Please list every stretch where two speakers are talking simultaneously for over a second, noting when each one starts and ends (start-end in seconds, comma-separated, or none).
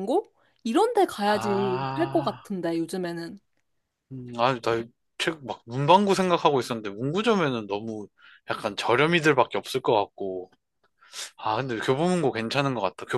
1.2-2.5